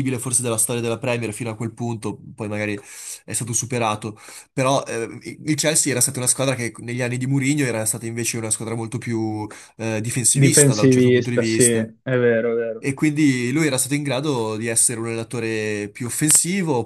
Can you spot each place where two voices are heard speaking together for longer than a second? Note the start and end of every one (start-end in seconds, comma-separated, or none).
10.3-11.9